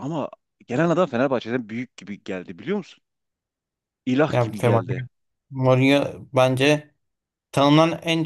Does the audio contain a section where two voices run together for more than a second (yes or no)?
no